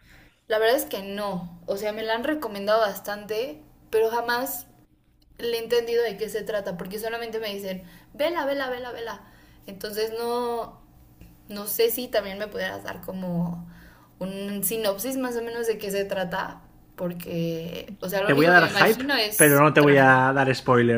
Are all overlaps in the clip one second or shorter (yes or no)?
no